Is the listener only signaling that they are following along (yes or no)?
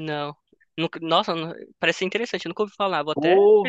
no